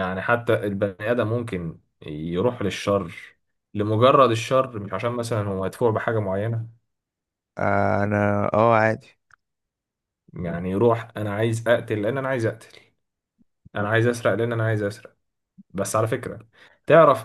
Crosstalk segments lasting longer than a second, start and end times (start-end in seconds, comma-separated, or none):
none